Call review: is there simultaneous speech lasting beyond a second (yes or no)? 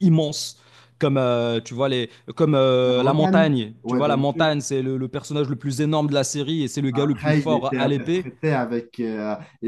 yes